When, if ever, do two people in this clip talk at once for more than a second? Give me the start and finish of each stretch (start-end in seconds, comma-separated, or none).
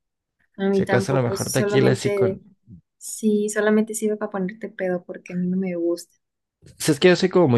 0.7-2.4